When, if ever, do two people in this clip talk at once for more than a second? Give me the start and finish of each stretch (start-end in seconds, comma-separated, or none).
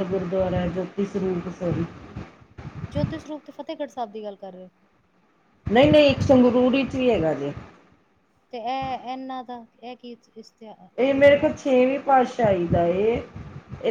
none